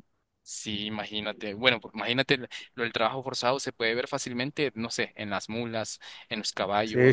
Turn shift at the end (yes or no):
yes